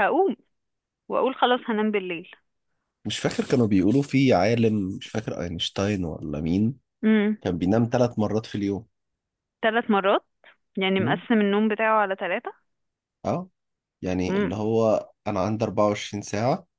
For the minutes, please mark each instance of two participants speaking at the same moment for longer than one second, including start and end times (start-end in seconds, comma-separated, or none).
none